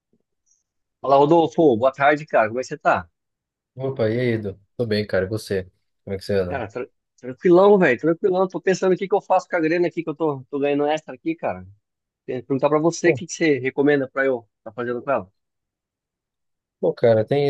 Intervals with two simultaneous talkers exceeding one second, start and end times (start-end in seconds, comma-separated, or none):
none